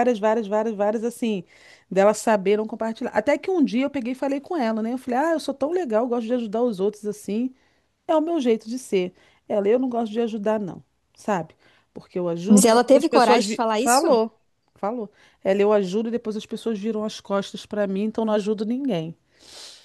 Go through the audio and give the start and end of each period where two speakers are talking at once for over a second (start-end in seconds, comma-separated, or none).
12.5-14.2